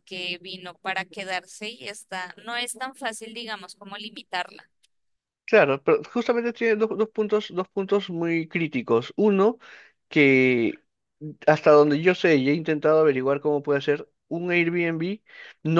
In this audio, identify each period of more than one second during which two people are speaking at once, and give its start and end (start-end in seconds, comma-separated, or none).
none